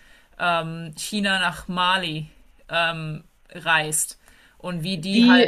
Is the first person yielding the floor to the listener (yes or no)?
yes